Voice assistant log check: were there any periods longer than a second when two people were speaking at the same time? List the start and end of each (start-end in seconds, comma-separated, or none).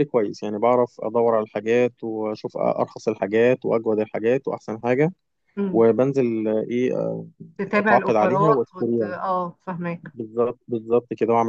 7.7-9.1